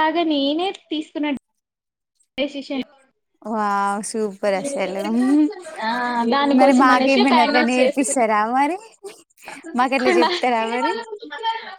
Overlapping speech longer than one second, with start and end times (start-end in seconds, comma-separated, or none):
6.6-8.2